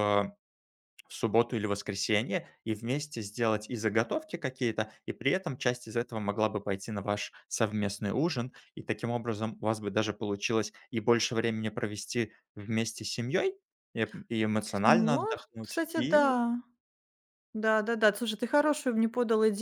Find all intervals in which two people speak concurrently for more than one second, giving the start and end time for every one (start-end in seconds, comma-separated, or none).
14.8-16.4